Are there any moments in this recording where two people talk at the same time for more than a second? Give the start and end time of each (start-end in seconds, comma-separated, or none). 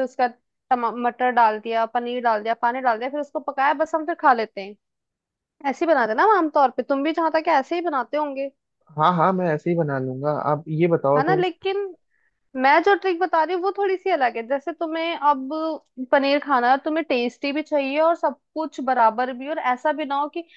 none